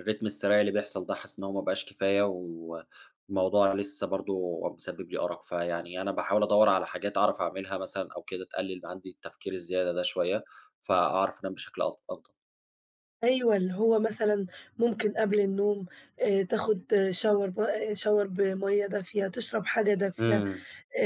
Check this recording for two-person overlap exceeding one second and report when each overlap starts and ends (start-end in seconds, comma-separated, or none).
none